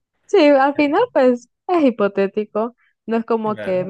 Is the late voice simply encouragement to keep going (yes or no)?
yes